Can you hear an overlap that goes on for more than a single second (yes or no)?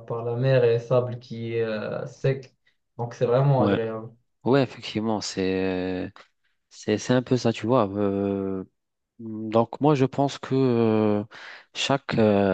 no